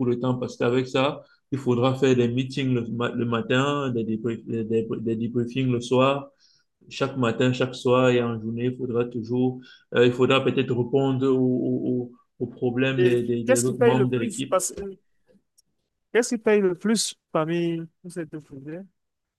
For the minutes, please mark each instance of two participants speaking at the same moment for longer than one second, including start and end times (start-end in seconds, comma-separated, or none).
13.0-14.6